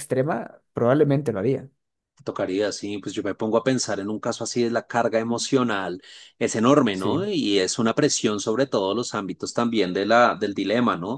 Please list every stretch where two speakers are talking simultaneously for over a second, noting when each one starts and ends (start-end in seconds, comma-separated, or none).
none